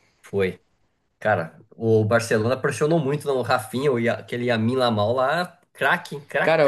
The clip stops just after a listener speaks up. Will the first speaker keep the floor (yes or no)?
no